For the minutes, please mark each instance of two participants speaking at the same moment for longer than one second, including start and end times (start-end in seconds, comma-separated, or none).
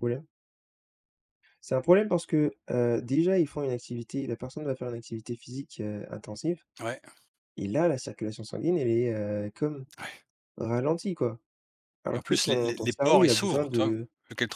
12.1-13.9